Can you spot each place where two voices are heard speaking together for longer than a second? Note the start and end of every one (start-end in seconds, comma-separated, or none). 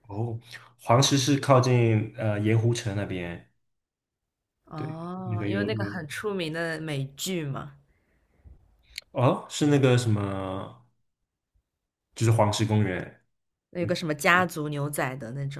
4.7-6.0